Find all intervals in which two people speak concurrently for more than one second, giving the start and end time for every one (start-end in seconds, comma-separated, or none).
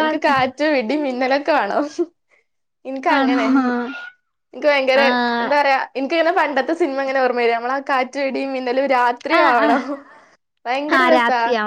none